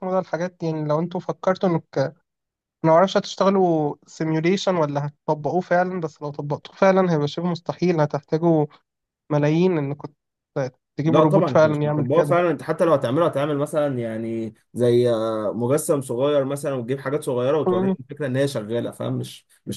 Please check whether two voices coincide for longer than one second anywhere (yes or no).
yes